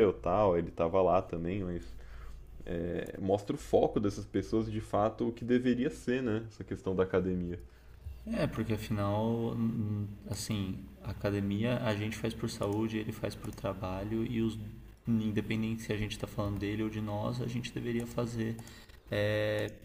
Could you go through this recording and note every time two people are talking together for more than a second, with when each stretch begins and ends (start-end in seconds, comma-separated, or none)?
none